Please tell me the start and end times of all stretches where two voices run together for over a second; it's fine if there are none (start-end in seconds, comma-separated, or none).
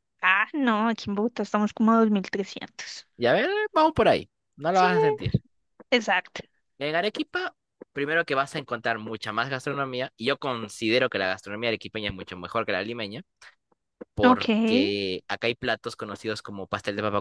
none